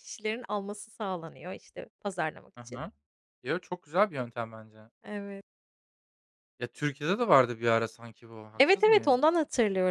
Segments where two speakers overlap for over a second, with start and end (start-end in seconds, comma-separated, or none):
none